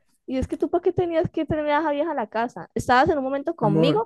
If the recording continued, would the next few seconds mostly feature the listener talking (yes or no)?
no